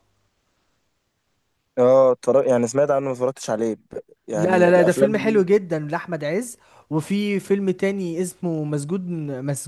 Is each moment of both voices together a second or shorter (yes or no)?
no